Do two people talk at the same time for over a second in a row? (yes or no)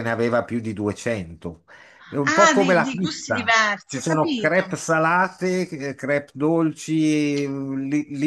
yes